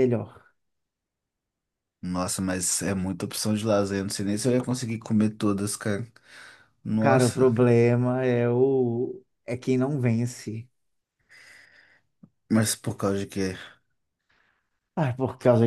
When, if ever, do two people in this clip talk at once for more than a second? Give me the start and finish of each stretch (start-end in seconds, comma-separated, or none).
none